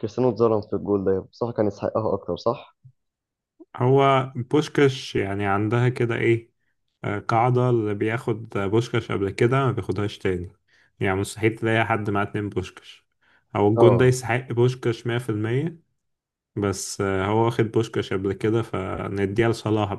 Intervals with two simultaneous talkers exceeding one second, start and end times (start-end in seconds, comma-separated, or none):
none